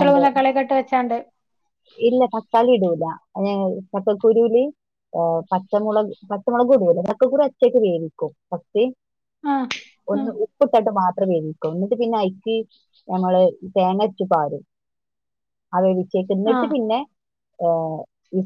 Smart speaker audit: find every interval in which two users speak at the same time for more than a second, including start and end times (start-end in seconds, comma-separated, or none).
none